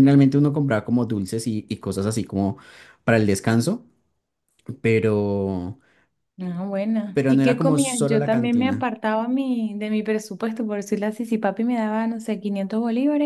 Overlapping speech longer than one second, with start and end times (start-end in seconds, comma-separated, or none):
7.1-8.8